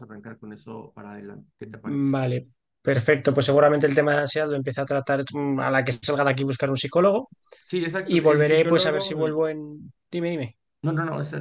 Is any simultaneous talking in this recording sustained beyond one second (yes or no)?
yes